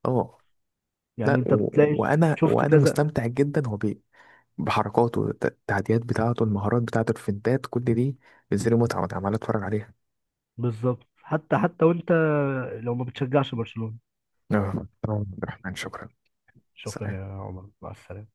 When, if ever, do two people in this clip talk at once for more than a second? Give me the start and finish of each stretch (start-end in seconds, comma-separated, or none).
1.2-3.0